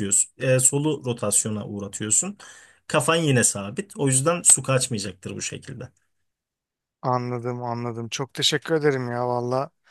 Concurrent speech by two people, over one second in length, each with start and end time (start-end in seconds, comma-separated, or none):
none